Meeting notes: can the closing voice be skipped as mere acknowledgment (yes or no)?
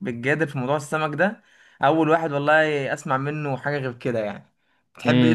no